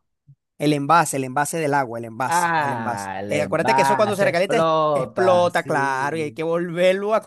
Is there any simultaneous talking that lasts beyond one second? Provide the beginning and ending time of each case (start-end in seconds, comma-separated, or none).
2.3-6.4